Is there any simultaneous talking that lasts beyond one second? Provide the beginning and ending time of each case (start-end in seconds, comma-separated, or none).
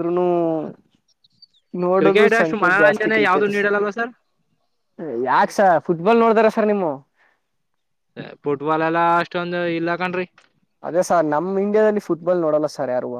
2.0-3.7